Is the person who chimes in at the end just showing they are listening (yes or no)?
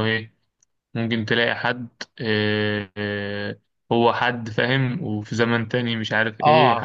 no